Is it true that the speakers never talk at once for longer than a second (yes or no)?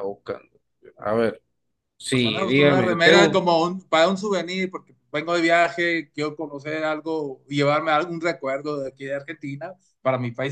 no